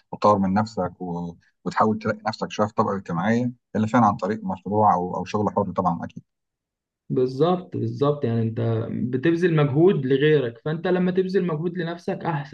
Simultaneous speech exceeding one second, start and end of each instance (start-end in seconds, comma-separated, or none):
none